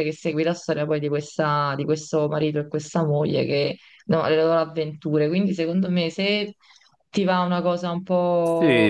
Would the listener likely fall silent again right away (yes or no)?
no